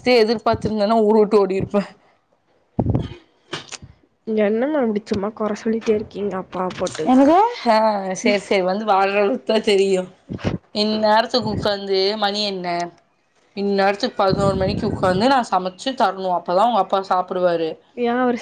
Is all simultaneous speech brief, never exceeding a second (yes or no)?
yes